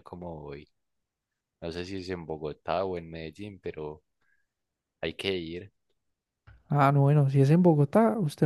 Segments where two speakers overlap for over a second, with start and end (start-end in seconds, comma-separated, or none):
none